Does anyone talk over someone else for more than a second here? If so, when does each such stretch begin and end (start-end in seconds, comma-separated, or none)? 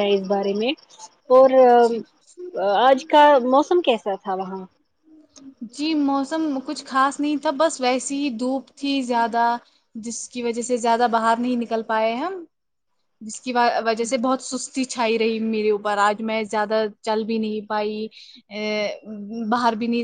none